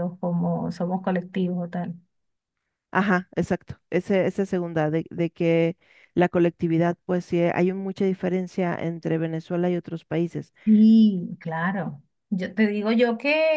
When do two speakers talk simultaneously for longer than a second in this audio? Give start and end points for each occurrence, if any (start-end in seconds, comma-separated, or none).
none